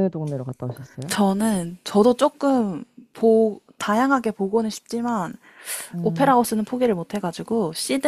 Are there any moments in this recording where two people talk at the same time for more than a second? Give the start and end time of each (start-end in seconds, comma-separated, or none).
none